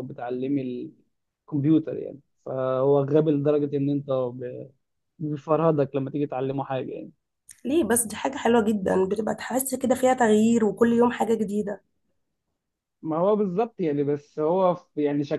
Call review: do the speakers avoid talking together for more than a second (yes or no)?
yes